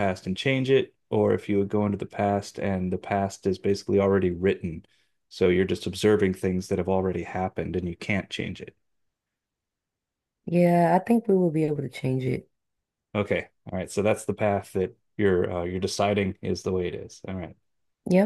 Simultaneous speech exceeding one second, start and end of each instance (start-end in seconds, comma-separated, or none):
none